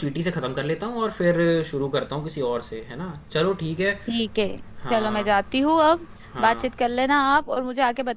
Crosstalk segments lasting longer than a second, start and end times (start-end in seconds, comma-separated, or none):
none